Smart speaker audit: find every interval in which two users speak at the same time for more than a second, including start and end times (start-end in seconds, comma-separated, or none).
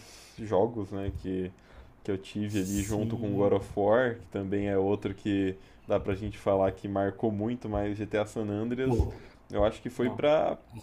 2.5-3.7